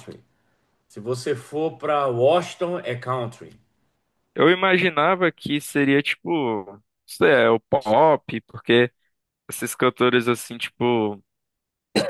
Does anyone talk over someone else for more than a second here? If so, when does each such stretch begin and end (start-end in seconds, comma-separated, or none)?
none